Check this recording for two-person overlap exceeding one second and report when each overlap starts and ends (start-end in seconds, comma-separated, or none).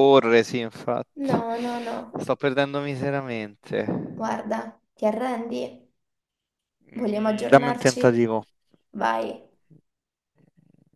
6.9-8.2